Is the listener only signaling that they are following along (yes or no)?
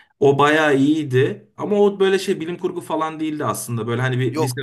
no